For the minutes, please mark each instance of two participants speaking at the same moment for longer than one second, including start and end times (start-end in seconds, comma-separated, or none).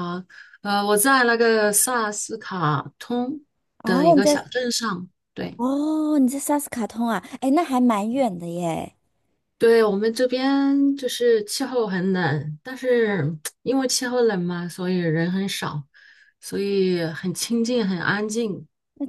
none